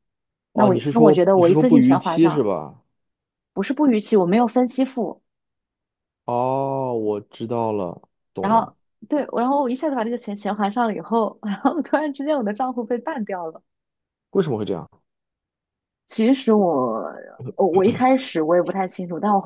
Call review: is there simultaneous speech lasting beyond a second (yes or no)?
yes